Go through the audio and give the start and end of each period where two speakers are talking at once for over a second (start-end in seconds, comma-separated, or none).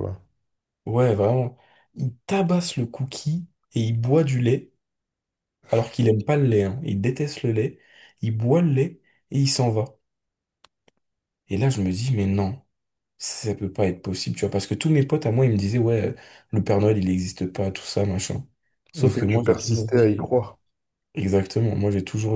19.0-20.4